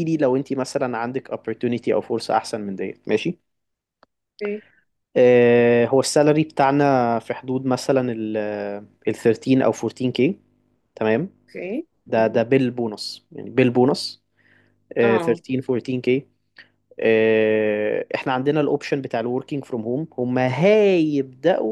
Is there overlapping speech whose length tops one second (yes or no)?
no